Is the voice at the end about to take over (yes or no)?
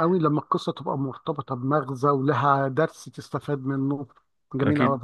yes